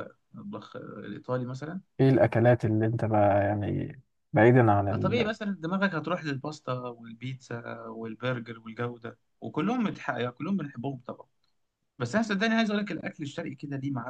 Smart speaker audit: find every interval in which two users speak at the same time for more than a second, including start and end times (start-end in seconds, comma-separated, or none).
none